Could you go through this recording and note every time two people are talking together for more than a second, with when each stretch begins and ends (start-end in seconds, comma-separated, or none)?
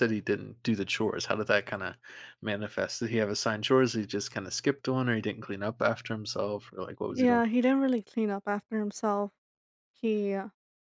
none